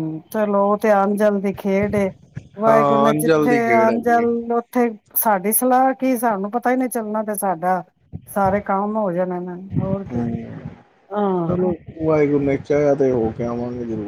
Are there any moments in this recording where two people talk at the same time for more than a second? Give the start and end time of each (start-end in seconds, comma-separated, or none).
2.7-4.2